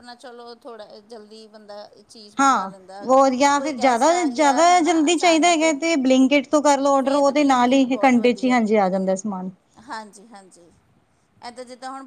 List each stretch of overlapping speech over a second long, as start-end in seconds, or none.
3.6-5.6, 7.0-8.6